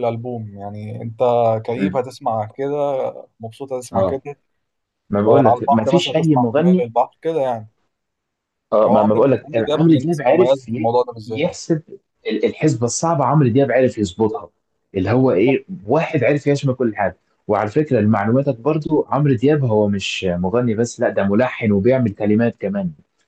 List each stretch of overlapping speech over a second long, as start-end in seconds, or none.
5.3-6.8, 8.9-11.6